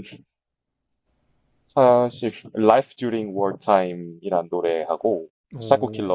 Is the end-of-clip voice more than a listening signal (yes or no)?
no